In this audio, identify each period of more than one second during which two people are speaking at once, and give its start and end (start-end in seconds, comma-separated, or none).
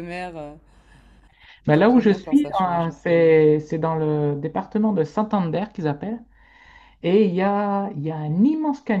1.7-2.9